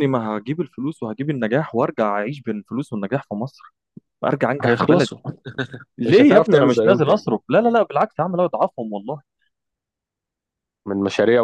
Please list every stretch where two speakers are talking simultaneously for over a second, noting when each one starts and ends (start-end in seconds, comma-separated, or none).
6.1-7.3